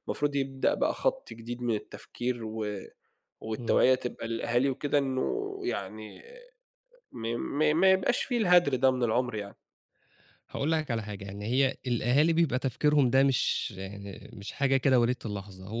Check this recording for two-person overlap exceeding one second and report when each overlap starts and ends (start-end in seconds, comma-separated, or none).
none